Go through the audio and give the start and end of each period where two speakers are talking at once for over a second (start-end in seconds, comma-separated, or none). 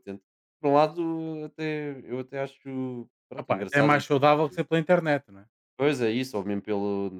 3.4-4.6